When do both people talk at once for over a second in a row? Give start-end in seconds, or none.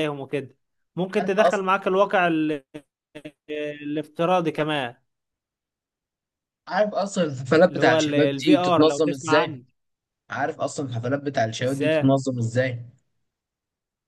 7.7-9.6